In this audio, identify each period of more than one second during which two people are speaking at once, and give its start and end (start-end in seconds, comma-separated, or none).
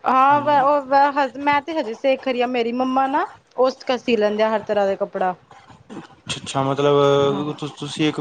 none